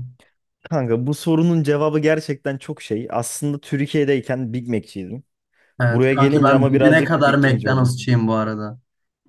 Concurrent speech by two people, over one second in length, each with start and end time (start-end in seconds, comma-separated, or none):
5.9-8.0